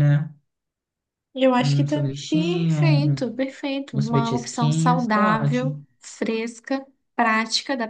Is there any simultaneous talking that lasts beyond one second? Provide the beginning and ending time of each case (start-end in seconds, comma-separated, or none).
1.6-3.3, 3.9-5.8